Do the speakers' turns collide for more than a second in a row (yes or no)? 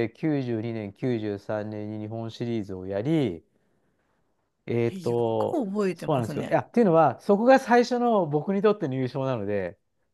yes